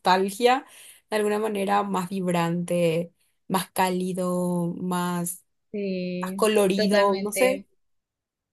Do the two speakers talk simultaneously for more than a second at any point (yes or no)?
yes